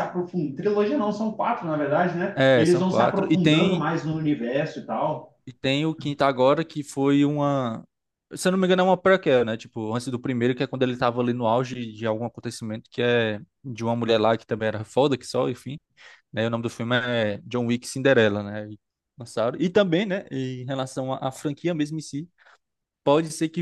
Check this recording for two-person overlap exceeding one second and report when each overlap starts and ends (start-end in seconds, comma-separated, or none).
2.3-3.9